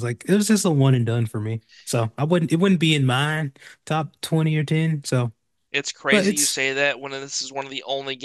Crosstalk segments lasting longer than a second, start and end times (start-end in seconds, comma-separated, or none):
none